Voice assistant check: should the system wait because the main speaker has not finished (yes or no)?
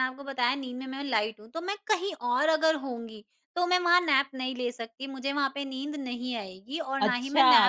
no